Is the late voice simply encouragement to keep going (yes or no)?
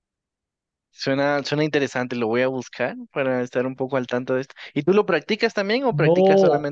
no